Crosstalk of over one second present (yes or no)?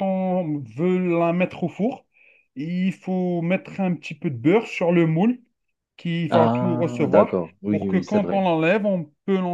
yes